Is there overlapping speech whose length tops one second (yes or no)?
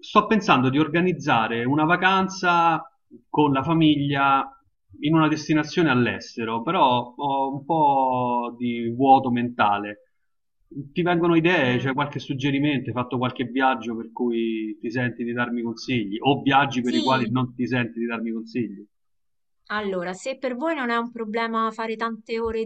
no